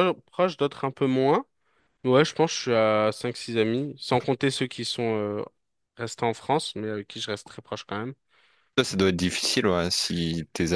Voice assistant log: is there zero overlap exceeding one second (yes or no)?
yes